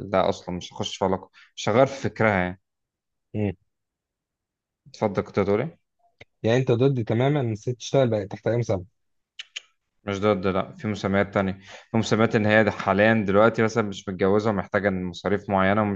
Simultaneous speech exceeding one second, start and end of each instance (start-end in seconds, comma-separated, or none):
none